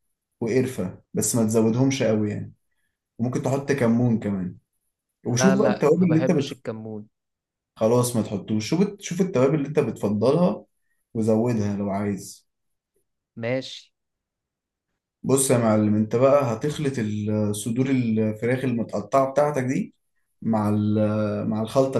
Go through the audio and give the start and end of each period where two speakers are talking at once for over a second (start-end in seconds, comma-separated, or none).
5.3-6.6